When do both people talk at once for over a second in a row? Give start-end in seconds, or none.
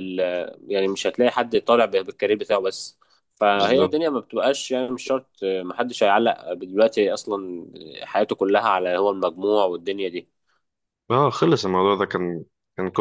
none